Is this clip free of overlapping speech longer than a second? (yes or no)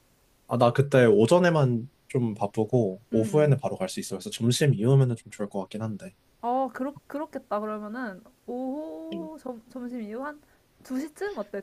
yes